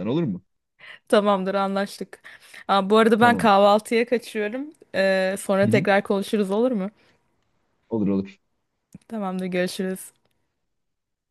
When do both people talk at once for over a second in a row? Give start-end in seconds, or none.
none